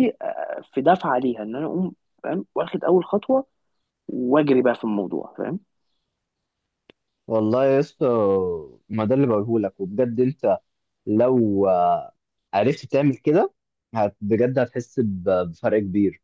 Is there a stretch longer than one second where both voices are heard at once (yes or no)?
no